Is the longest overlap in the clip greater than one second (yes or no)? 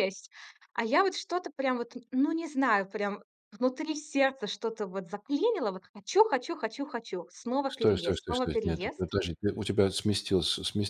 yes